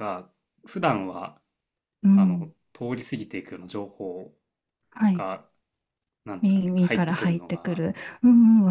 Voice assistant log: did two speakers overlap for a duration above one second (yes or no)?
yes